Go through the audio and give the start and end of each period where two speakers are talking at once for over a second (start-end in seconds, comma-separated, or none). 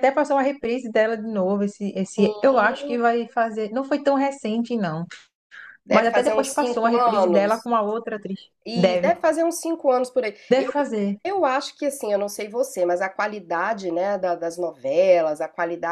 5.9-7.7